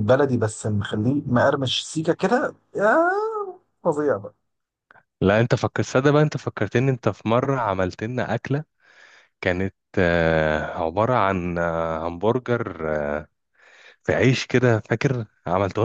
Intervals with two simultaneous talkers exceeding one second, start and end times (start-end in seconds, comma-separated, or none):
none